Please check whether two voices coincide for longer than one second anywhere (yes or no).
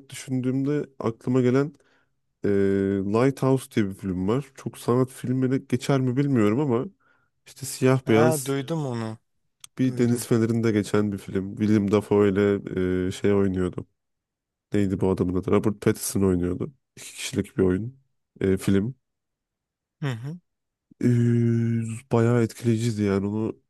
no